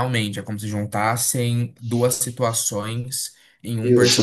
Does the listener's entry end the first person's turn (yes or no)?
no